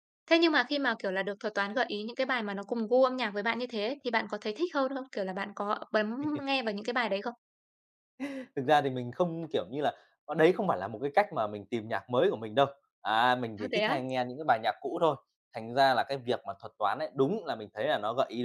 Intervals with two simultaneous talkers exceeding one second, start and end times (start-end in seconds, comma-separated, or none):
none